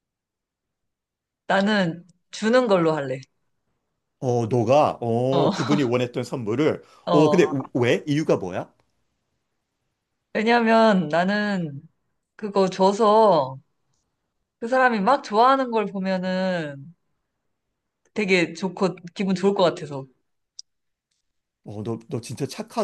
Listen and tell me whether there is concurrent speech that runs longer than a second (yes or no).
no